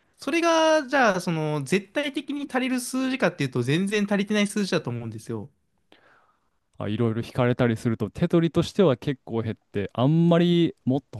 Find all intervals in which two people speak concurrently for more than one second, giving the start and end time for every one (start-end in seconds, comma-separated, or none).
none